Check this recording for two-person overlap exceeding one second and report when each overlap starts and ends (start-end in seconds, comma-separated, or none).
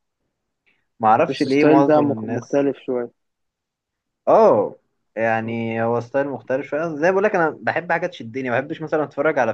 1.2-2.7